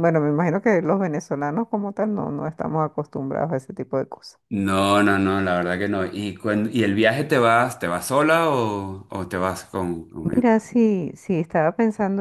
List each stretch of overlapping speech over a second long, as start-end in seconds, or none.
none